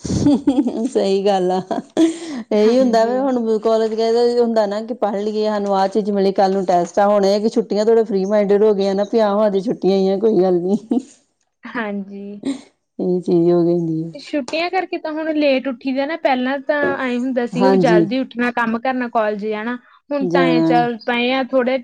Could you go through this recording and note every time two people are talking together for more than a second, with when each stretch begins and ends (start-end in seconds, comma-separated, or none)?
none